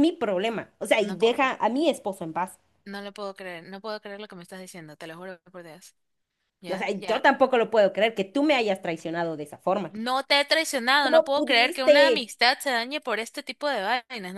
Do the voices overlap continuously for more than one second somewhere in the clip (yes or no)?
yes